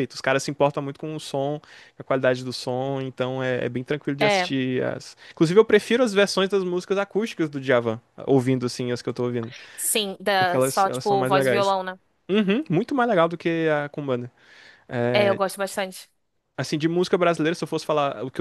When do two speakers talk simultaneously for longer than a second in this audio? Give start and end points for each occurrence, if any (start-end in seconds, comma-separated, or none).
10.4-11.8